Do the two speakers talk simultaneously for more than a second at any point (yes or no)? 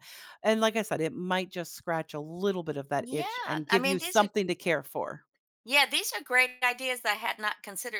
yes